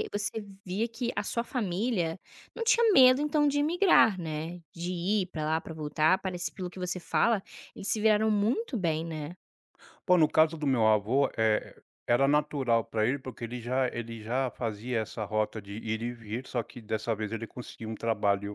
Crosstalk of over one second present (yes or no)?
no